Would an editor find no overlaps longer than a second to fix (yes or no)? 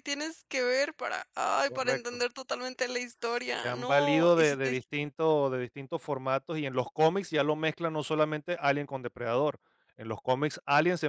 no